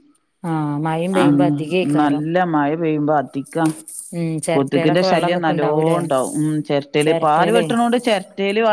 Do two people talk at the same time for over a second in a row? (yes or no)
yes